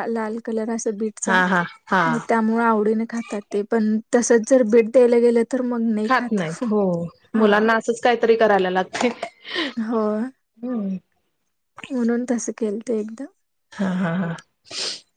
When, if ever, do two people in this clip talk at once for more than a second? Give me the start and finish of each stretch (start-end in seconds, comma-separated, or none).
none